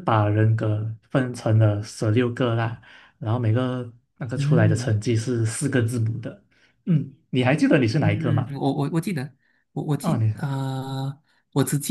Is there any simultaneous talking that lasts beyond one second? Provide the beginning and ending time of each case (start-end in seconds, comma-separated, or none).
none